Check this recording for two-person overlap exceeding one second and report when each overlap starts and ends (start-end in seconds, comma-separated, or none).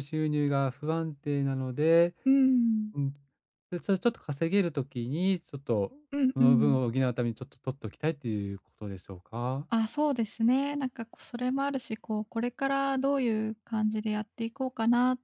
none